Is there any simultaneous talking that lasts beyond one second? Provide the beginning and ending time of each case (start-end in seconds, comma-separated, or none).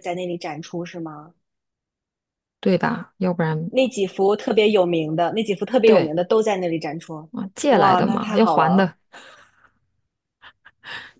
7.7-8.9